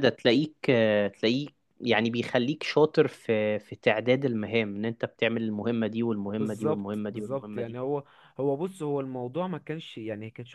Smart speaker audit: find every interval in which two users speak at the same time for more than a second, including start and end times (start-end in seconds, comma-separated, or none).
6.4-7.8